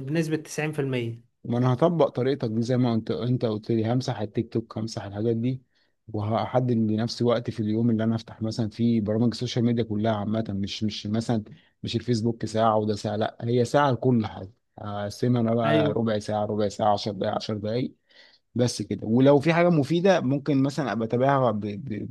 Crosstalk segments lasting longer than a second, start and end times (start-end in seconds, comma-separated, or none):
none